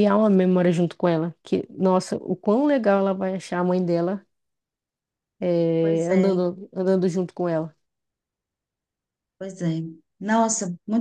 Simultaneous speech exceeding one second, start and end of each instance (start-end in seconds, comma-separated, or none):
none